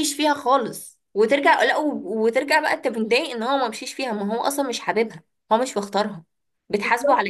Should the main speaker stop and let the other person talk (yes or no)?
yes